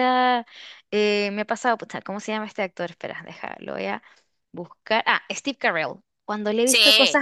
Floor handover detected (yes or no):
no